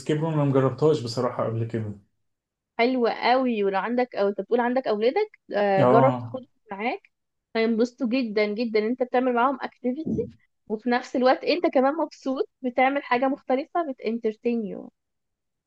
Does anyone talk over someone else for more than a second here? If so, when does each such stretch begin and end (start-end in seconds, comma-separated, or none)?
none